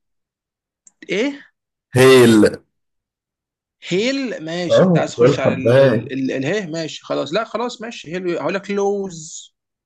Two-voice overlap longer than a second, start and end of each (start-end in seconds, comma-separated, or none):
4.7-6.1